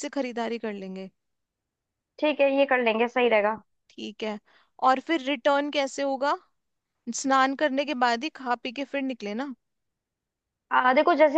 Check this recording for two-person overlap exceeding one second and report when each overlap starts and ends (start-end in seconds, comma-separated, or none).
none